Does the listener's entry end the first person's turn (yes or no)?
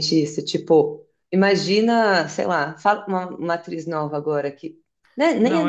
yes